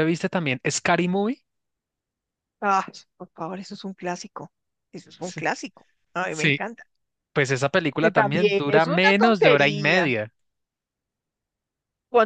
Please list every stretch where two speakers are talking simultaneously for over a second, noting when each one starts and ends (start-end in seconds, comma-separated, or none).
8.0-10.1